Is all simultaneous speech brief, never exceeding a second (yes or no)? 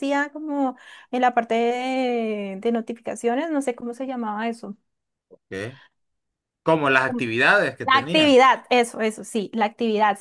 yes